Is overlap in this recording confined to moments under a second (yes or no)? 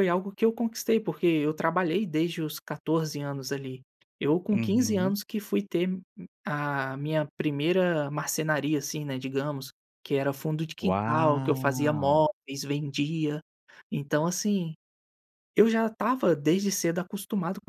no